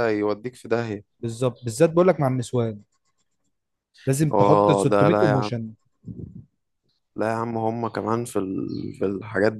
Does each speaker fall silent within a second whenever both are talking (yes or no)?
no